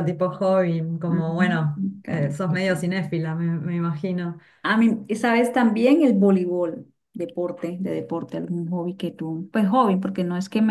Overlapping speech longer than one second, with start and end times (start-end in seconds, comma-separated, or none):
1.1-2.3